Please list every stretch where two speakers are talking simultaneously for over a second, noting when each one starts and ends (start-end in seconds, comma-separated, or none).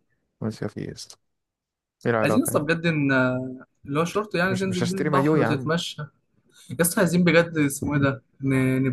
4.5-5.7